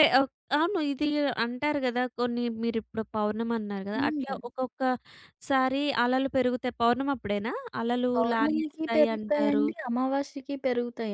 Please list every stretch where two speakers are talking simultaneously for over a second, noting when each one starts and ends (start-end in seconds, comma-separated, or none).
8.1-9.6